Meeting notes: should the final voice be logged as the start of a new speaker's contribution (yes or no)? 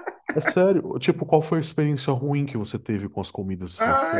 yes